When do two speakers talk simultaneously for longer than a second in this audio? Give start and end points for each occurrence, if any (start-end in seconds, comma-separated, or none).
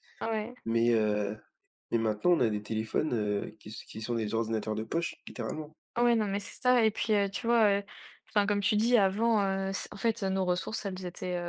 none